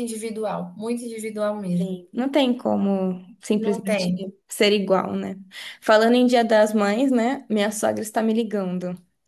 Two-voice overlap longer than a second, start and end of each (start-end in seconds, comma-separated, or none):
none